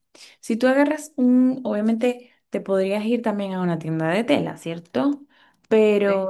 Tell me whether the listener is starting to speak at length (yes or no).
no